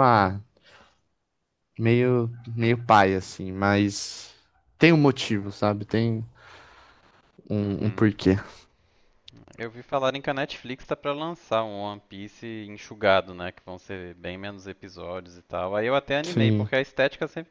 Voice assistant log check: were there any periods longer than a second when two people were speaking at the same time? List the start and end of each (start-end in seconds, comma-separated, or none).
none